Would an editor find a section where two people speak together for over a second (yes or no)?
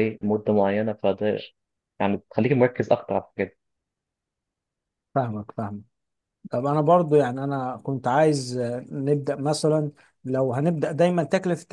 no